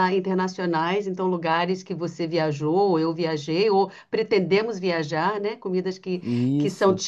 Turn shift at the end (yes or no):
no